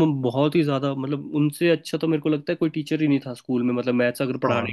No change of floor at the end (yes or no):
no